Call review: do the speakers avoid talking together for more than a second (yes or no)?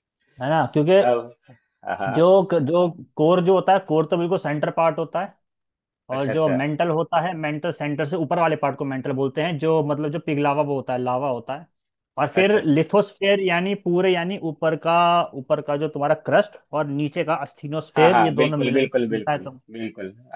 no